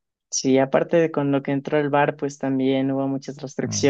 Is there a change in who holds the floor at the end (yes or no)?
no